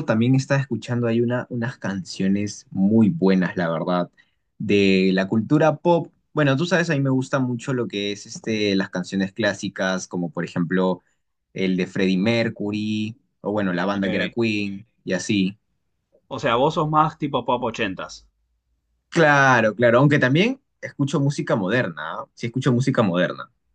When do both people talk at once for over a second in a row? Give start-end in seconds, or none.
none